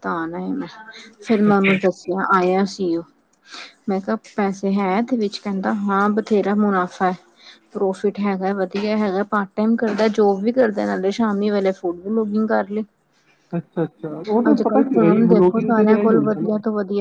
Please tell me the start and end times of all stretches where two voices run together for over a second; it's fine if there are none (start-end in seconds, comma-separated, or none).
14.5-16.5